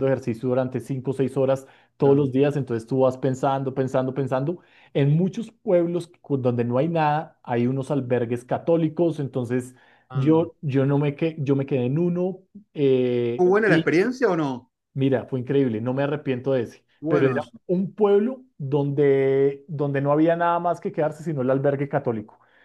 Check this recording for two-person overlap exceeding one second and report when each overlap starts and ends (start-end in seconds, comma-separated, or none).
none